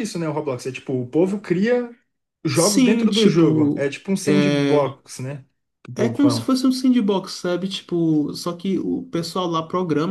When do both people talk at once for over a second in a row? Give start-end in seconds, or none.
2.5-5.0